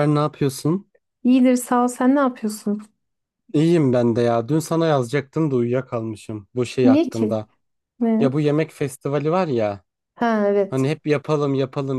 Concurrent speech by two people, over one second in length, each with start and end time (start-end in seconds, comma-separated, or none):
none